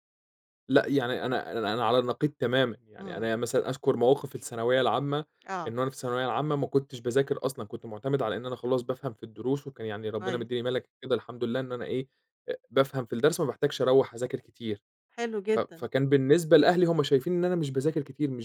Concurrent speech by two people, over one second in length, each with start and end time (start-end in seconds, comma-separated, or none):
none